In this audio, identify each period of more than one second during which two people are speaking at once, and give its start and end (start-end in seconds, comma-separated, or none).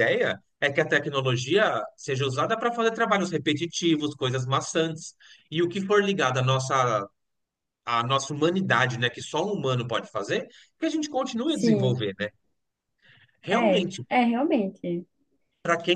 none